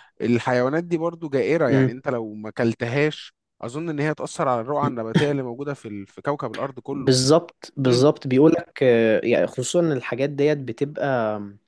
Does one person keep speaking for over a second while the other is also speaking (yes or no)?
no